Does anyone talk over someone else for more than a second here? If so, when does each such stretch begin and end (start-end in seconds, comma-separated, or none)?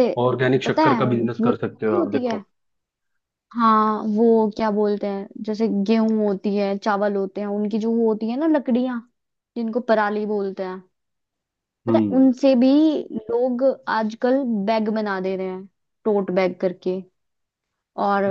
0.7-2.4